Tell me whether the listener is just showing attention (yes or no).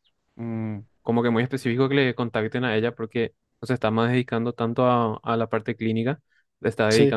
yes